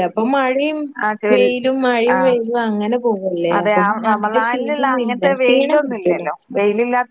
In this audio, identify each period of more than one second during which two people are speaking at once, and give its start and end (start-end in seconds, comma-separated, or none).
3.6-6.2